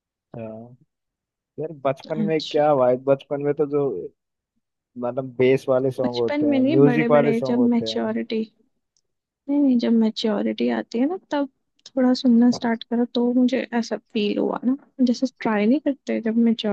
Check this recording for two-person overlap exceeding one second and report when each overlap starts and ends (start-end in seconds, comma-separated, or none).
6.0-8.2